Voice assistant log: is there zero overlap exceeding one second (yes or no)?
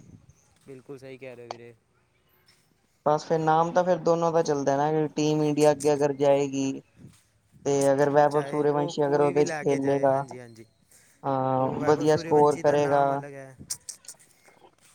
no